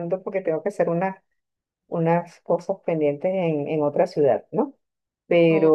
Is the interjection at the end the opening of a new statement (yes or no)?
no